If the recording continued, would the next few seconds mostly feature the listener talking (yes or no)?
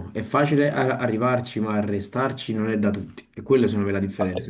yes